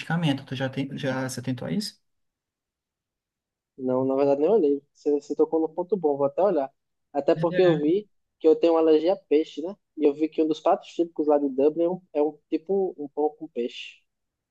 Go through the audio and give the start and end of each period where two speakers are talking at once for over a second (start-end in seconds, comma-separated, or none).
none